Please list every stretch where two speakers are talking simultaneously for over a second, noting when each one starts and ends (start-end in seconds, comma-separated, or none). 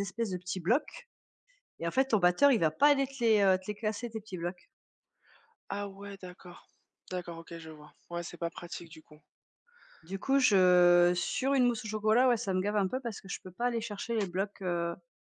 none